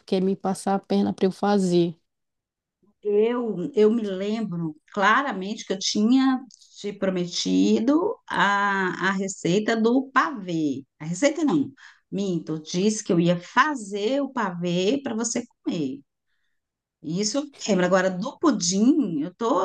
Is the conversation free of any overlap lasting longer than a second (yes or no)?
yes